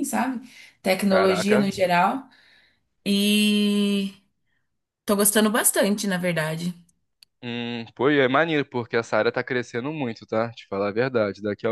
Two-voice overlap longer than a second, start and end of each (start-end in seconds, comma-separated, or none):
none